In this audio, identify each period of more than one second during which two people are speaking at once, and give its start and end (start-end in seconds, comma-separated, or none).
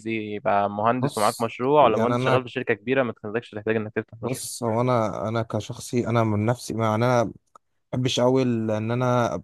1.0-2.4